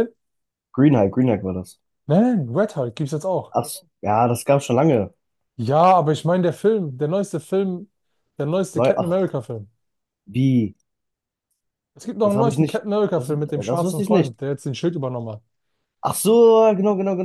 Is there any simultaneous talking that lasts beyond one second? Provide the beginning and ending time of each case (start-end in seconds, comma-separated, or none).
12.2-14.3